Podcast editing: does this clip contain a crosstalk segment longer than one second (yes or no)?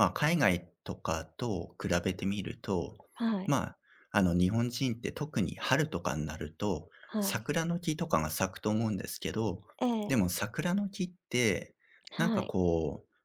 no